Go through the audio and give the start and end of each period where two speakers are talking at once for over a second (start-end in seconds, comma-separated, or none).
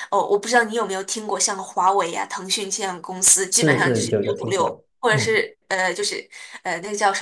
3.5-5.4